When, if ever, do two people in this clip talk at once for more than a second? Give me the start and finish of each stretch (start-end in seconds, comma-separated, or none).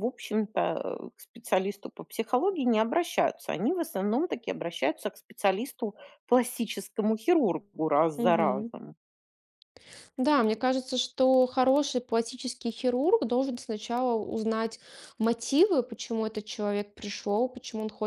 none